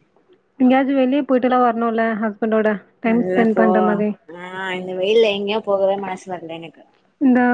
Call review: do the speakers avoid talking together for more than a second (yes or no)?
yes